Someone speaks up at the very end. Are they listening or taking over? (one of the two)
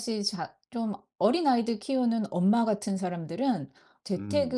listening